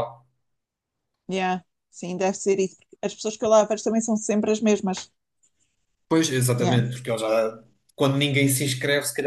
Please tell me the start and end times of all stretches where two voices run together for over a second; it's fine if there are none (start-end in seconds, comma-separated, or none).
none